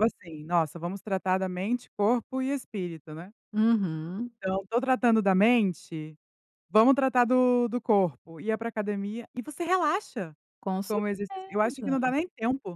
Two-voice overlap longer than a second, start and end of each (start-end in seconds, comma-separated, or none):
10.9-12.1